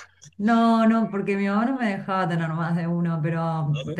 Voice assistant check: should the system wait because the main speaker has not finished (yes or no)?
yes